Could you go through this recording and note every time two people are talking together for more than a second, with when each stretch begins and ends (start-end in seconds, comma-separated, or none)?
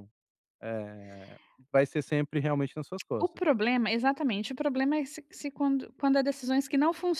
none